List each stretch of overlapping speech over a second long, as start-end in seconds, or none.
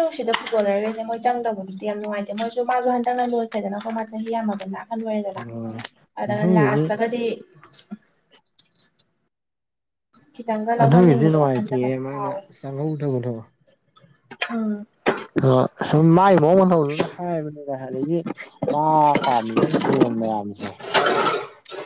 10.8-12.4